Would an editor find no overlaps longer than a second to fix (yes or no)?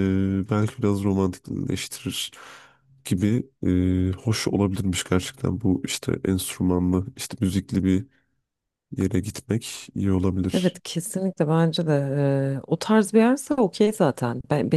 yes